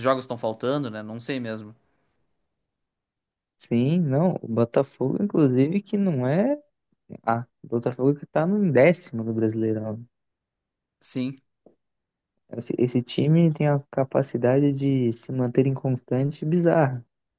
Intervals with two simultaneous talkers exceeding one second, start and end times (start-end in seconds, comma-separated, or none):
none